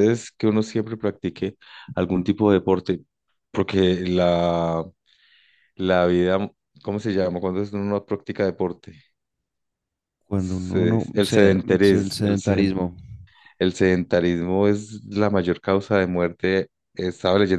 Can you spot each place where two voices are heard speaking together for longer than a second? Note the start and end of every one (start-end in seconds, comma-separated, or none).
10.3-12.7